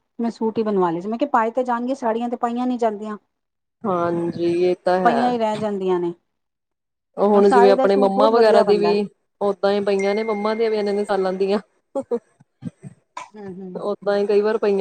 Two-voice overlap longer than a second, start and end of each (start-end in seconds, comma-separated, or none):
7.4-8.9